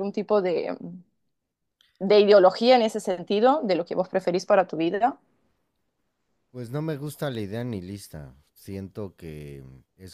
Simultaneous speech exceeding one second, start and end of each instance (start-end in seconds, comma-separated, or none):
none